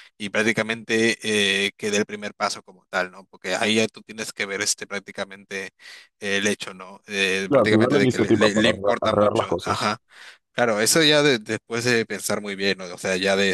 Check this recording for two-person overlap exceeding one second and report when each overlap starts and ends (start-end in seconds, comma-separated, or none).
7.5-9.9